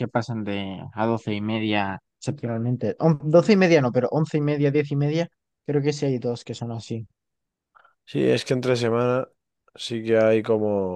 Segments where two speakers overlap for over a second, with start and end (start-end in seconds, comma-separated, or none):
none